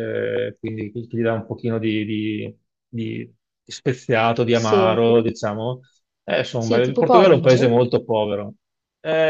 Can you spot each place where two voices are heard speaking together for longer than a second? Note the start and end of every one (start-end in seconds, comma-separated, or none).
6.5-7.8